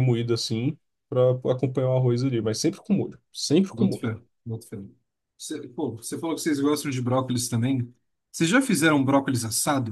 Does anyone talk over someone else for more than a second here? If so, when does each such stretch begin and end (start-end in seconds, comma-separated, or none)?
none